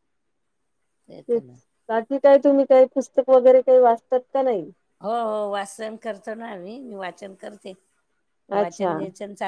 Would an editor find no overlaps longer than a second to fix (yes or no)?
yes